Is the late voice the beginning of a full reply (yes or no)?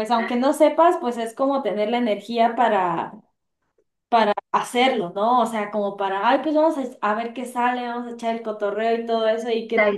no